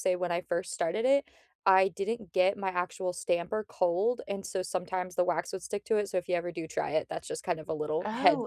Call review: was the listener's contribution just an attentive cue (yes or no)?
no